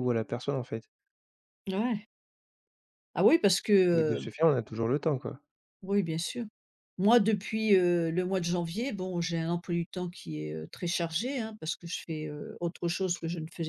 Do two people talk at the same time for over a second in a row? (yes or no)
no